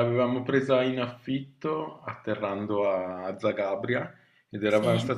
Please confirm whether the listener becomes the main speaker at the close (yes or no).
no